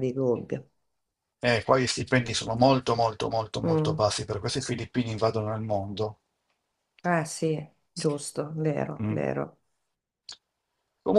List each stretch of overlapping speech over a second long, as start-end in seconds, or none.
none